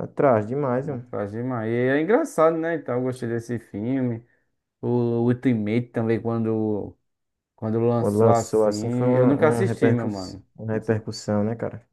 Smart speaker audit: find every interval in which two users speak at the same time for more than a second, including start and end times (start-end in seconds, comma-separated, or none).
8.0-11.0